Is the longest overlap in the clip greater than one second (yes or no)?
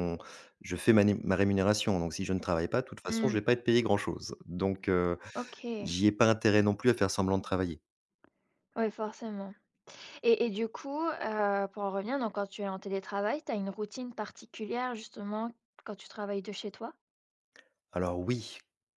no